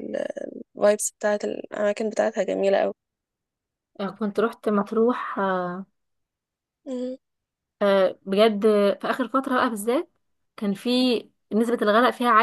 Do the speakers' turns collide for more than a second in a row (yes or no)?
no